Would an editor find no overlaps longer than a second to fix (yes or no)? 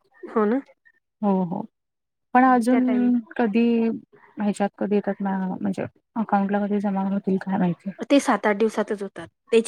yes